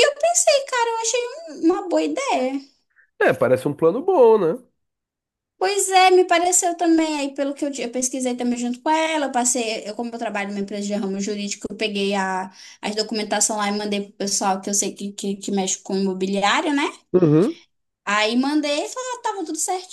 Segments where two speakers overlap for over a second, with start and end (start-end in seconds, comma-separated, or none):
none